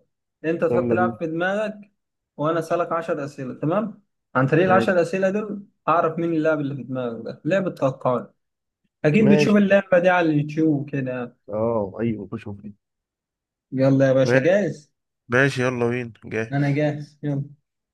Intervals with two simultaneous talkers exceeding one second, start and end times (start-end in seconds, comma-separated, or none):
none